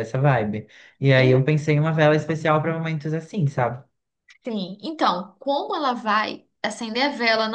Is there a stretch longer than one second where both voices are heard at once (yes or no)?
no